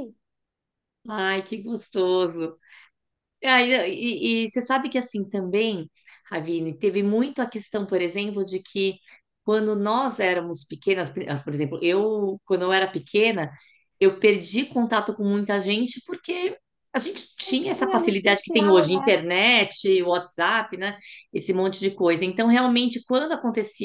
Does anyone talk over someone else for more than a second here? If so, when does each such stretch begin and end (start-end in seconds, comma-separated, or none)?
17.8-19.2